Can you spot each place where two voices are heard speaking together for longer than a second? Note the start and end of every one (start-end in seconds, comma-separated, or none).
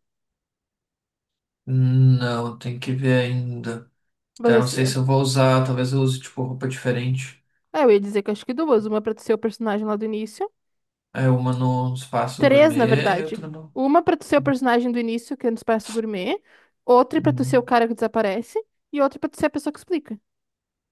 12.4-13.8